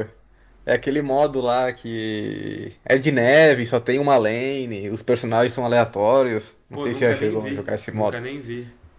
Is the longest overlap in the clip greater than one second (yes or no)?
yes